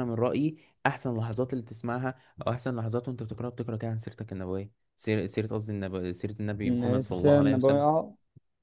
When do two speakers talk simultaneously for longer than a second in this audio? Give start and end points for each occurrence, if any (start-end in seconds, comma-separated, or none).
6.6-7.9